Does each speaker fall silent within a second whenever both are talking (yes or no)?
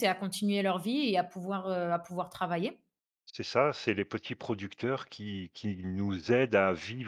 yes